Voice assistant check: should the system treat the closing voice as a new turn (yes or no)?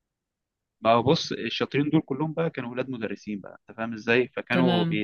no